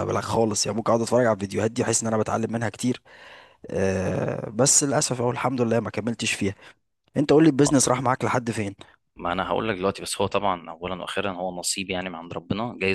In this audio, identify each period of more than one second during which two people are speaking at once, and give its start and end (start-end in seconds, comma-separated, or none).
none